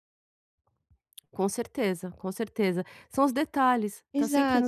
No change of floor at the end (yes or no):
no